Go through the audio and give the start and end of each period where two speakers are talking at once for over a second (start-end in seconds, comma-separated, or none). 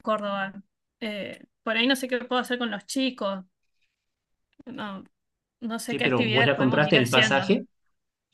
5.9-7.5